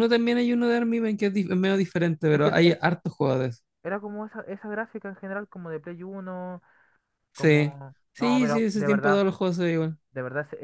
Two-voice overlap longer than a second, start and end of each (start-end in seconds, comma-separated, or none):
7.3-9.2